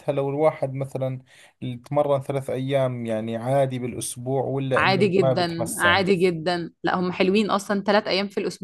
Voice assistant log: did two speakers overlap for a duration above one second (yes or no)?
yes